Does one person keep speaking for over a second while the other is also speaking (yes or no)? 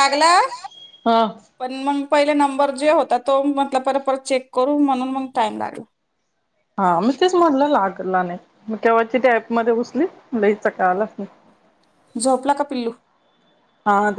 no